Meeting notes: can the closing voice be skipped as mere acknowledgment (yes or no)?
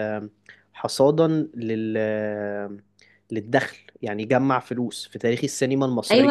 no